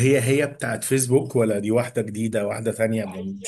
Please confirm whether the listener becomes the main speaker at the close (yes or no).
yes